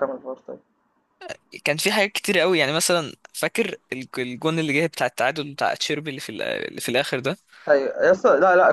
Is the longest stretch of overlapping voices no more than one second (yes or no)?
yes